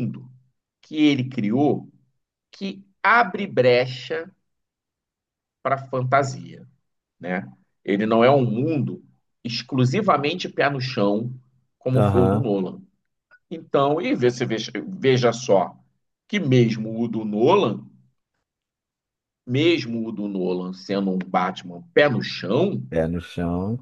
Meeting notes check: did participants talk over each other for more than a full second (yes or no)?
no